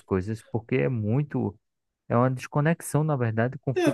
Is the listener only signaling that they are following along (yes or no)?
no